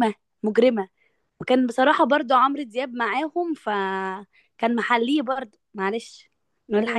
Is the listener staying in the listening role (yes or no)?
no